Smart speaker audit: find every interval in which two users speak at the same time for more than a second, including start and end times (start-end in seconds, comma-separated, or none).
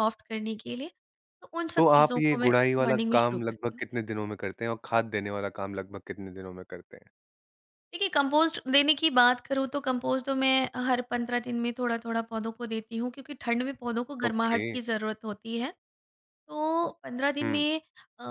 1.8-3.8